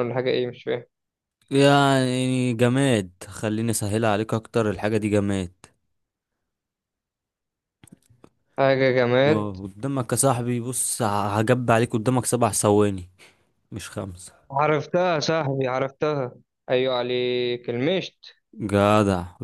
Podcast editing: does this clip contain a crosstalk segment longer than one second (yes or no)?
no